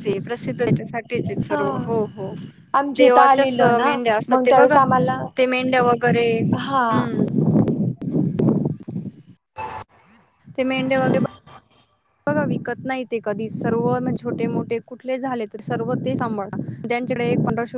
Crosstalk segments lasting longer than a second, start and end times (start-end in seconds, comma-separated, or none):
3.0-4.8